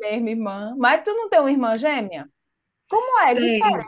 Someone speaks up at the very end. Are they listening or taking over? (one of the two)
listening